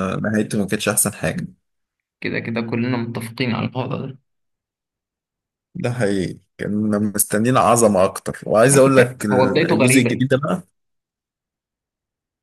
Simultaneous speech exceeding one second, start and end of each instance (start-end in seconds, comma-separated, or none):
8.7-10.3